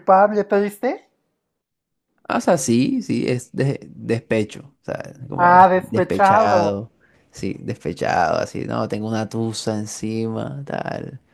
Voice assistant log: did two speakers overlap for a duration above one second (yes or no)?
yes